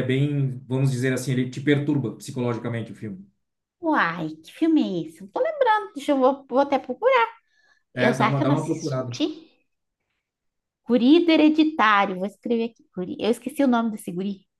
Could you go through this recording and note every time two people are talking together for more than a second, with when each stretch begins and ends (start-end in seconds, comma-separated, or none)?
7.9-9.2